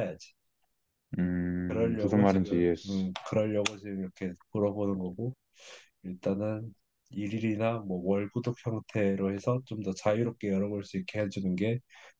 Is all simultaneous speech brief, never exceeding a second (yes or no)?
no